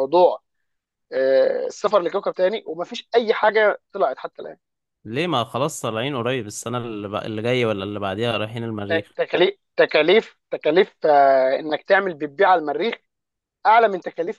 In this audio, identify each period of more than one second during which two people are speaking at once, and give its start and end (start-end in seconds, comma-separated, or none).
none